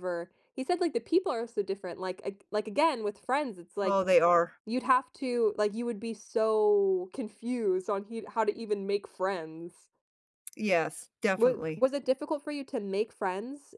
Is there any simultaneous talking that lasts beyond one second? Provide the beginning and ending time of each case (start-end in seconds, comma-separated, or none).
none